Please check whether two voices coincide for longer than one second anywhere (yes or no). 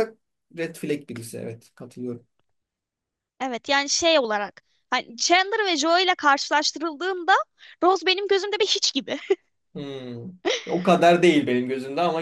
no